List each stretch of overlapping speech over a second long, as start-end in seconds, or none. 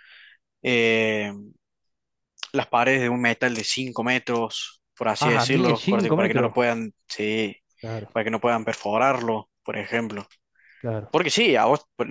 5.2-6.5